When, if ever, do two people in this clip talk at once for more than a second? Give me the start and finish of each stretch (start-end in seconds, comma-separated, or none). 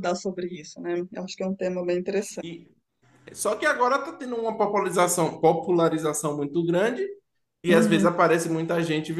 none